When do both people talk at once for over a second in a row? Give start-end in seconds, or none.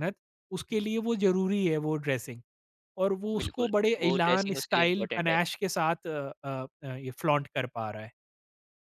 3.4-5.4